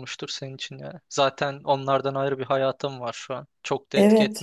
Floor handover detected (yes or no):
yes